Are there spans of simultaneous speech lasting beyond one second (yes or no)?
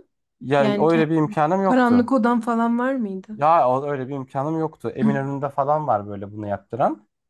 yes